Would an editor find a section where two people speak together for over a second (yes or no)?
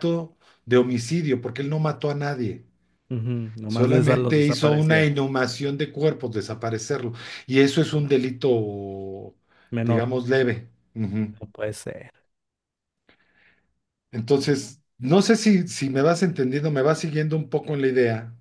yes